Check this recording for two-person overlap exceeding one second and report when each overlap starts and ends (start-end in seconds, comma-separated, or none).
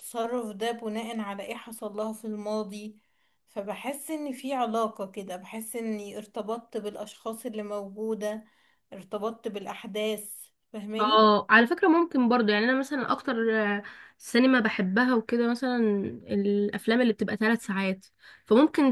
none